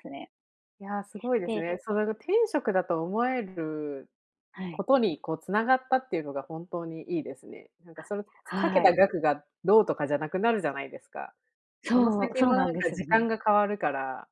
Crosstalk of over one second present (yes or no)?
yes